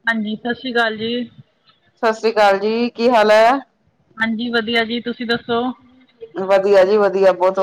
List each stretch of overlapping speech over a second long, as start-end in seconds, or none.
none